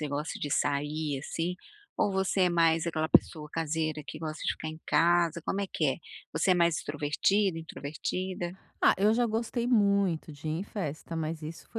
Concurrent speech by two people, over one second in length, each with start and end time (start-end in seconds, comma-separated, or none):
none